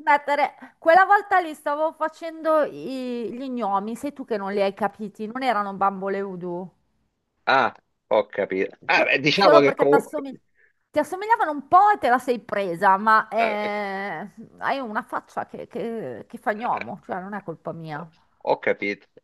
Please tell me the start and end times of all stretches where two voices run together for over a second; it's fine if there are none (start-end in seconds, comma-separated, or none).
8.9-10.3